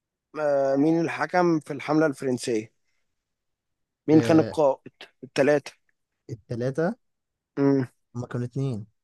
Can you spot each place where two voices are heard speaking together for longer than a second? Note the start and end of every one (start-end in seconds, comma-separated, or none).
none